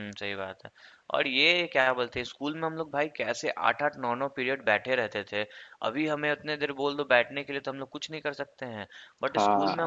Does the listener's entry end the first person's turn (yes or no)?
no